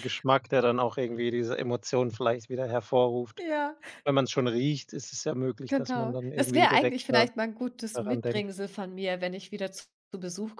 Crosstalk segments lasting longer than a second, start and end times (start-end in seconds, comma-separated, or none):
5.7-7.3